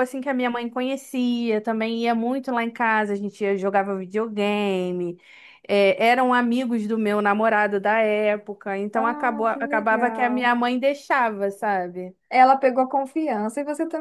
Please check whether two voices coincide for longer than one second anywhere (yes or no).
yes